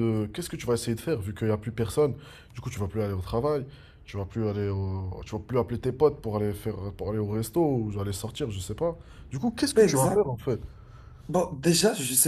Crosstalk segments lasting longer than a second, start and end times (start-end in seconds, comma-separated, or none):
none